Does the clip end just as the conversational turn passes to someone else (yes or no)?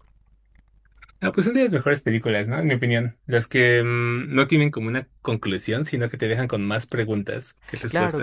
yes